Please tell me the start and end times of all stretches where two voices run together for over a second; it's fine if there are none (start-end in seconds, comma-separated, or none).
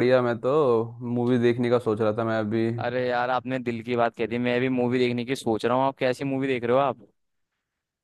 none